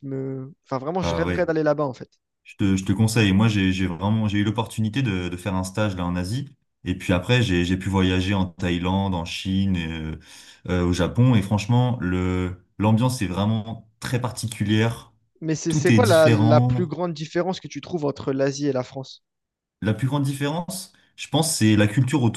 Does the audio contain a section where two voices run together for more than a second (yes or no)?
yes